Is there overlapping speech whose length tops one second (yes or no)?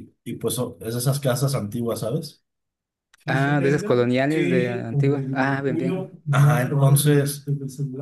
yes